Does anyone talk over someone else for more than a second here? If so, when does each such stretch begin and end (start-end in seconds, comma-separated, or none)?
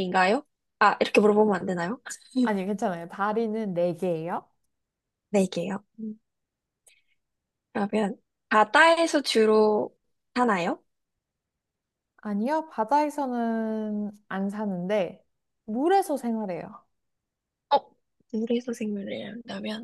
none